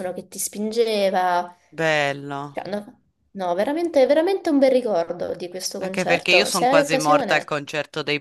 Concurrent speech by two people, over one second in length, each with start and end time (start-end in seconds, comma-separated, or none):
5.8-7.5